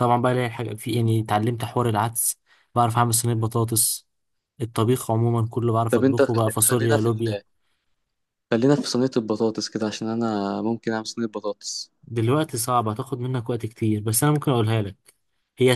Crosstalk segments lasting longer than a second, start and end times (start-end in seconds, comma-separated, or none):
5.9-7.4